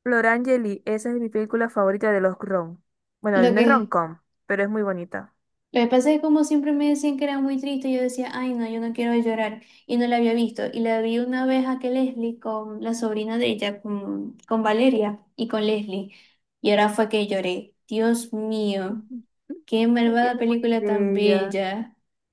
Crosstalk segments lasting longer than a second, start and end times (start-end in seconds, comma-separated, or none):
20.0-21.6